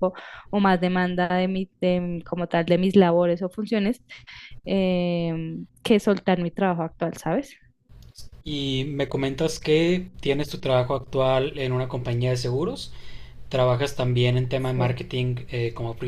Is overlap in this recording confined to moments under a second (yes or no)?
yes